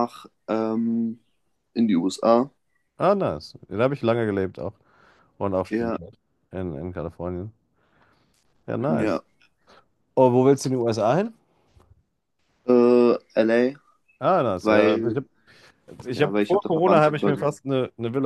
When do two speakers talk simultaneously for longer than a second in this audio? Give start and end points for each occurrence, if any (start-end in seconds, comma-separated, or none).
16.1-17.4